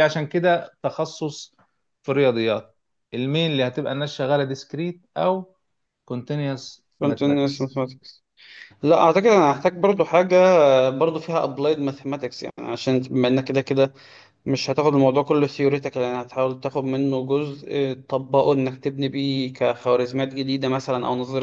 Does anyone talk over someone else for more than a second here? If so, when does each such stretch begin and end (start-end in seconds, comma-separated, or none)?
none